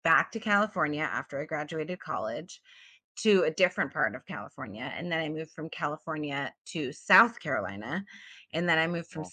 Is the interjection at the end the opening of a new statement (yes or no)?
no